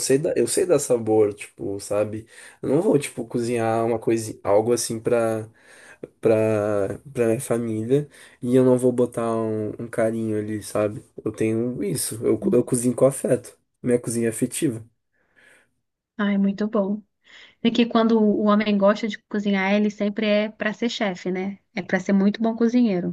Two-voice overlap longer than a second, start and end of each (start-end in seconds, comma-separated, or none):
none